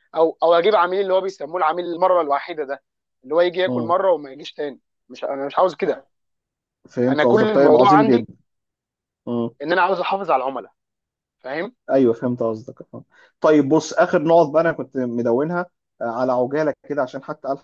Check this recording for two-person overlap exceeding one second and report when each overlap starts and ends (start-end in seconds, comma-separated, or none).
7.1-8.3